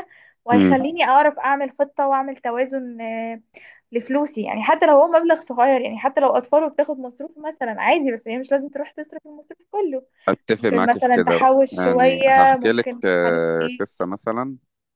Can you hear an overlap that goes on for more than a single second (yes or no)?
yes